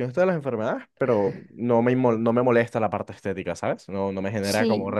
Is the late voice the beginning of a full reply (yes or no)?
no